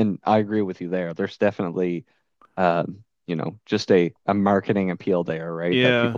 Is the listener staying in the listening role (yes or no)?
yes